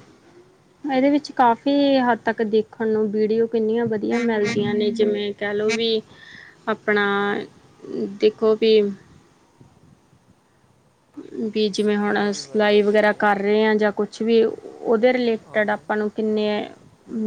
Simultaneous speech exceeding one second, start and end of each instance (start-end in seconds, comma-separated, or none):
11.6-13.2